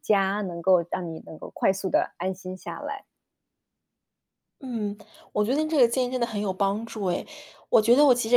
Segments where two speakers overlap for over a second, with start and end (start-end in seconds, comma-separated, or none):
none